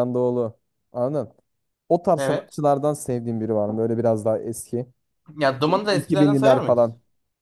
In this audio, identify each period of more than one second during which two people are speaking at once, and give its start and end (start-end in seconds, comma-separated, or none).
5.4-6.8